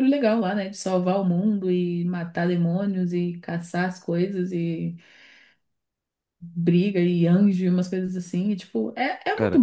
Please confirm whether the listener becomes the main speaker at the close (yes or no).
no